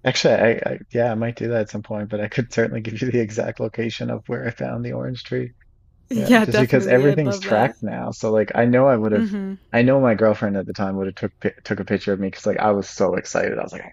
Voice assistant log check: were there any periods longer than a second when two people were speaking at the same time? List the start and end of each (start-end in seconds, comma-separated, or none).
6.2-7.8